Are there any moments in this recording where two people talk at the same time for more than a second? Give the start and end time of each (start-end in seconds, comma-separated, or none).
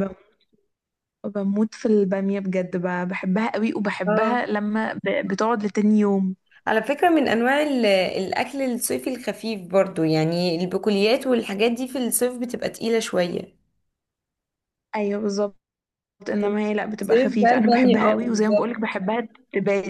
17.0-18.8